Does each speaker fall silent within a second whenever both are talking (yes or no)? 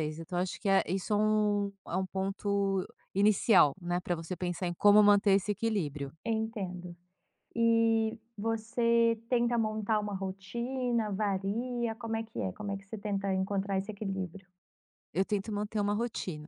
yes